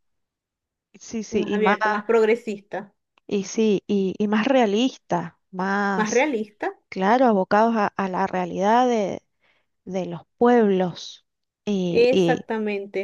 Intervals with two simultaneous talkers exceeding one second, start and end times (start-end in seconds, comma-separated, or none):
none